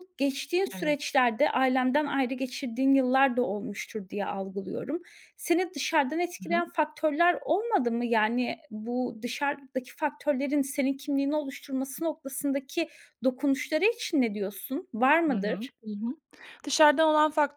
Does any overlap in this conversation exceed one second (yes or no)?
no